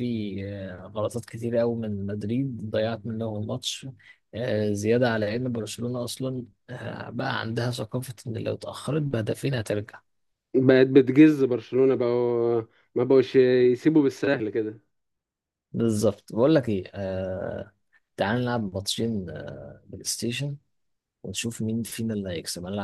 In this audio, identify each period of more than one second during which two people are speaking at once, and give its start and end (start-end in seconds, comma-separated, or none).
none